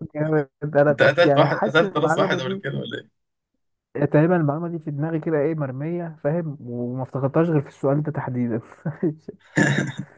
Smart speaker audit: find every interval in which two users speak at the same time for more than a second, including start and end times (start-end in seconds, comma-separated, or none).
0.9-2.6